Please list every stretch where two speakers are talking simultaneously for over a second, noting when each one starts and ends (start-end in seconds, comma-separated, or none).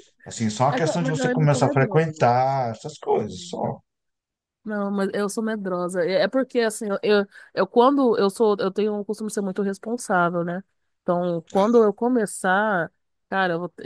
0.7-2.3